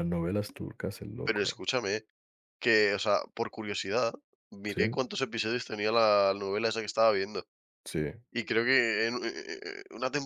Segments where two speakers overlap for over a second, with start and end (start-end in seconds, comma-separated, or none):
none